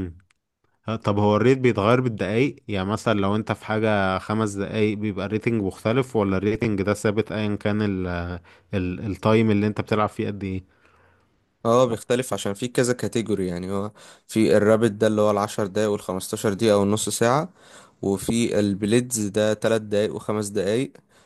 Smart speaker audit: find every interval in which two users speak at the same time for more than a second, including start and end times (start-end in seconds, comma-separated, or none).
none